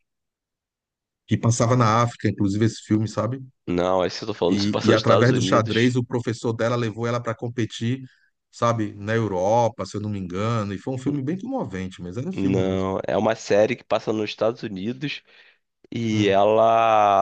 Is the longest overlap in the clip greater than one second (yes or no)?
yes